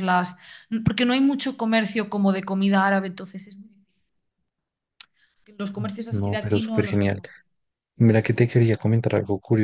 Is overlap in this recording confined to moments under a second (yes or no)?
no